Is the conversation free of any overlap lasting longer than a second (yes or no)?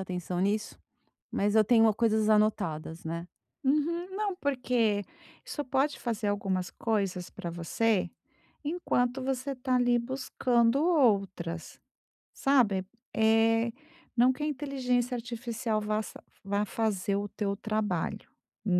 yes